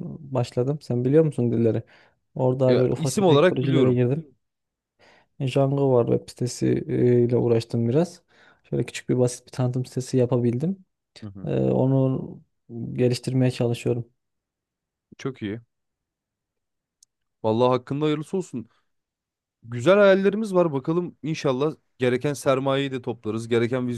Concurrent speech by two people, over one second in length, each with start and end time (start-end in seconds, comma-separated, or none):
2.7-4.0